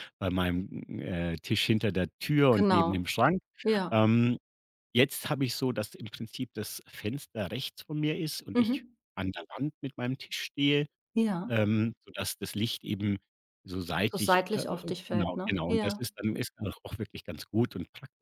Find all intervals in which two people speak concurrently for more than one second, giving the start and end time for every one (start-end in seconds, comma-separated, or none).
14.1-16.1